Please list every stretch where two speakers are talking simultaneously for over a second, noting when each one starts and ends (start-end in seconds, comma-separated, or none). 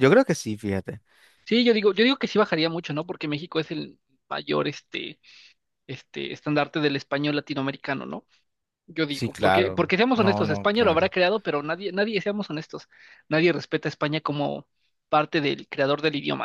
9.1-11.1